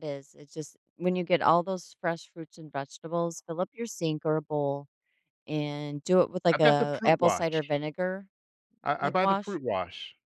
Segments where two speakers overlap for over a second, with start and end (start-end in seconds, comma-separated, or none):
6.5-7.7